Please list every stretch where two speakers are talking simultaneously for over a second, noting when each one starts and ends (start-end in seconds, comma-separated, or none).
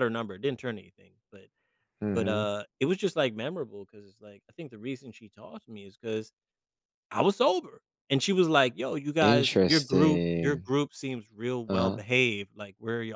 9.2-10.7